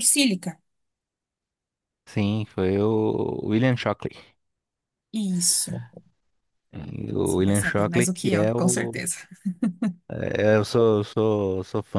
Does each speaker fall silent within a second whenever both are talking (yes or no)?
no